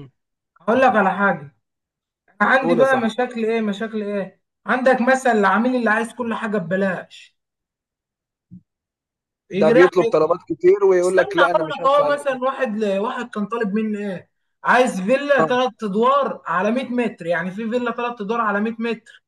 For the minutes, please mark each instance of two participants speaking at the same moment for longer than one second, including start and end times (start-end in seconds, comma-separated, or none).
11.0-12.4